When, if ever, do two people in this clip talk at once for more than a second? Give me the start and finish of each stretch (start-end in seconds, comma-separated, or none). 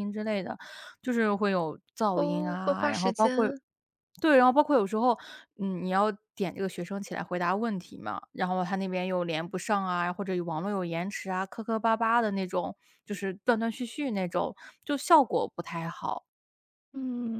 2.1-3.5